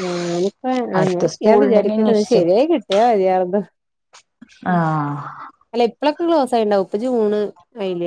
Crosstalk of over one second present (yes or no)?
yes